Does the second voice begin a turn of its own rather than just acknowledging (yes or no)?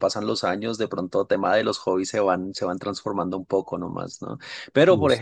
no